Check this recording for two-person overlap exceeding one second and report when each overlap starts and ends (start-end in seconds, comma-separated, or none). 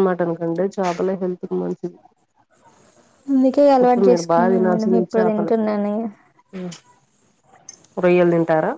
3.8-5.5